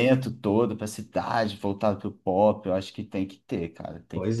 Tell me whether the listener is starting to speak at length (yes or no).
yes